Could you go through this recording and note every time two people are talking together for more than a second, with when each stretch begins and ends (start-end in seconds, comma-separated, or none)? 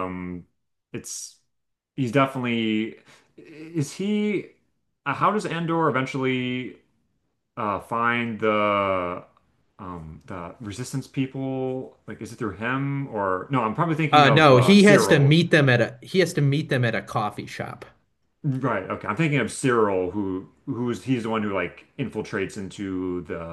14.1-15.3